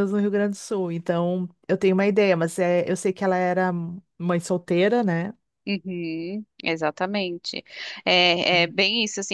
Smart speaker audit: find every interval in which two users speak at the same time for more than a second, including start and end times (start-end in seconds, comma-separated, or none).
none